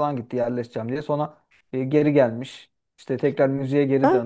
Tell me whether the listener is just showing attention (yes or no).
yes